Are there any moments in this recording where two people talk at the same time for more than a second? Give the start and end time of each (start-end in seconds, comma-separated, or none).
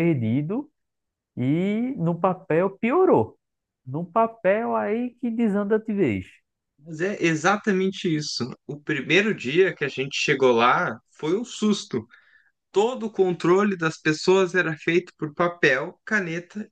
none